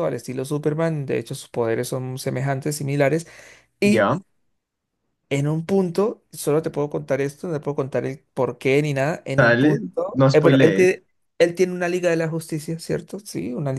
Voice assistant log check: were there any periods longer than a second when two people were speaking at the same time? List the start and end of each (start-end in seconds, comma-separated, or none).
9.4-10.9